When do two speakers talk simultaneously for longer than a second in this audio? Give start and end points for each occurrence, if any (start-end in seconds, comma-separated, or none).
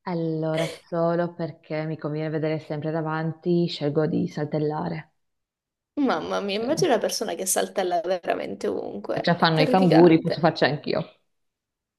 9.2-10.5